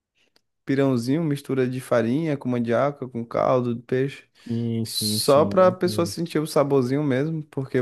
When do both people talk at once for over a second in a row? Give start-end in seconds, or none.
4.8-6.2